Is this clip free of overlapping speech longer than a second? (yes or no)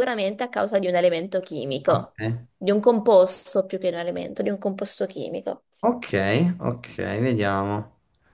yes